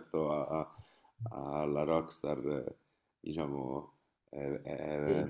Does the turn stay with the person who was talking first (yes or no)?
yes